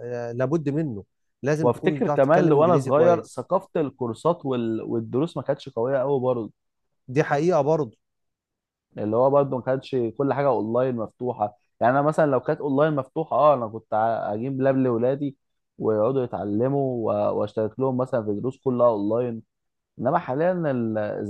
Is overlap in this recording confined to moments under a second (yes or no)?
no